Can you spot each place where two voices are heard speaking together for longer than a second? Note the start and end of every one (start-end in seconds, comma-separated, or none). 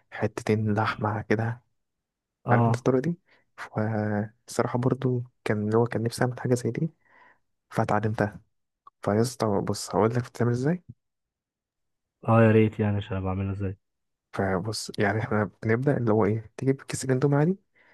none